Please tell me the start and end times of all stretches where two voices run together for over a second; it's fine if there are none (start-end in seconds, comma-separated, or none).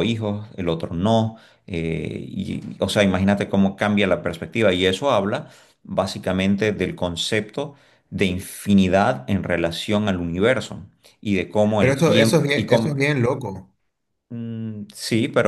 11.8-13.0